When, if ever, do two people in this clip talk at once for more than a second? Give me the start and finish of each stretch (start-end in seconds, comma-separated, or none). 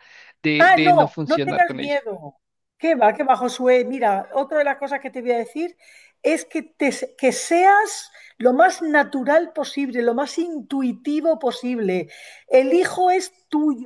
0.6-2.0